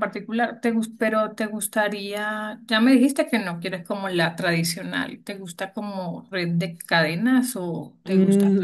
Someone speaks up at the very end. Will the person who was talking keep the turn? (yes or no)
no